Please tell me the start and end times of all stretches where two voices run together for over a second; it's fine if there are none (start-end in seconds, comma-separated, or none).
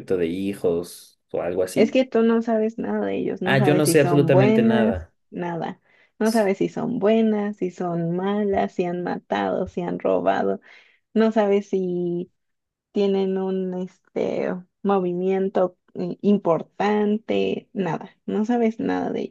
3.4-5.1